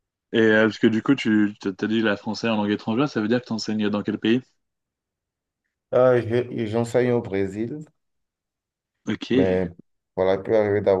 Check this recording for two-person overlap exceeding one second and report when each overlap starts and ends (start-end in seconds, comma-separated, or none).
none